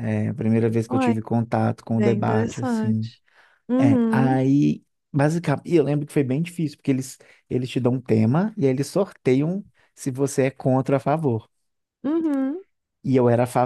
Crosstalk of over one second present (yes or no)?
yes